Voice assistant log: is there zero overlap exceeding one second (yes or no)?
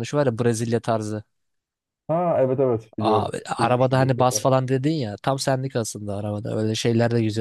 no